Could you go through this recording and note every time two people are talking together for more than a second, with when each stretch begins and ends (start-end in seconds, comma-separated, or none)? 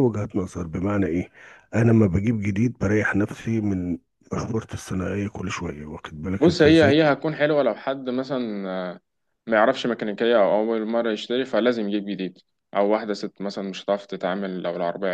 none